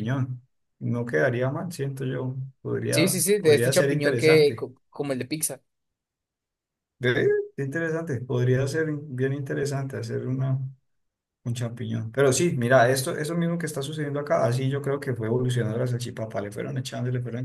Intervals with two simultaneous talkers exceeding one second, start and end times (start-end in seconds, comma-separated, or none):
2.9-4.7